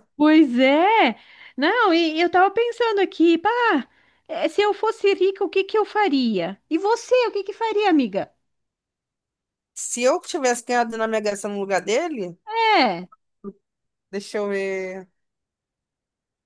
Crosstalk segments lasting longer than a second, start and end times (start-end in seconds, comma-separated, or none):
none